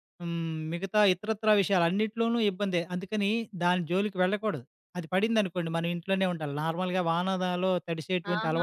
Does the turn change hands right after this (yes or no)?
yes